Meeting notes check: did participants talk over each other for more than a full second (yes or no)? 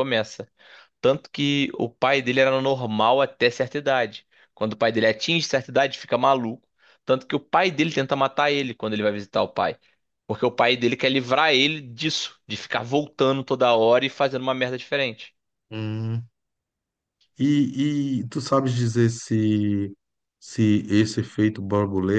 no